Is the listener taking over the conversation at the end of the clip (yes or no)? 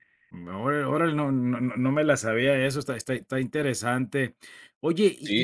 no